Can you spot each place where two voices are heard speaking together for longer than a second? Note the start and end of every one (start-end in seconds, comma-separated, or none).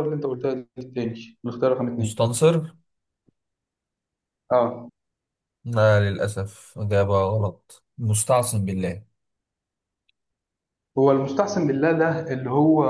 none